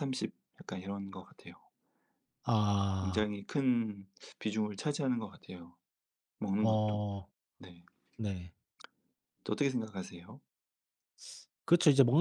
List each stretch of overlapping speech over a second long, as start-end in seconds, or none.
none